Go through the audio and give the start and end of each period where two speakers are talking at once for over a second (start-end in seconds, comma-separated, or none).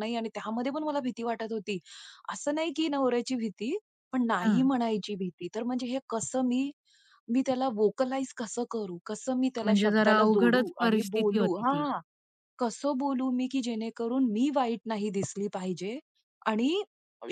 9.6-11.8